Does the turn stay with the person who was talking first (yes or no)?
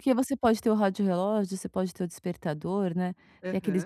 yes